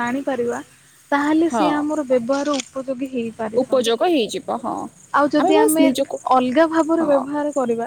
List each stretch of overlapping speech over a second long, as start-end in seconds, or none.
none